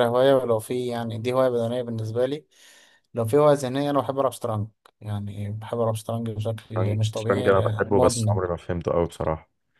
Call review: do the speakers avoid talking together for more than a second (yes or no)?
no